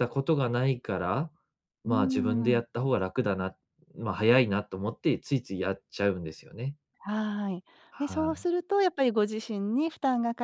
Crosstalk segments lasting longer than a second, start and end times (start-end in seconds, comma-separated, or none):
none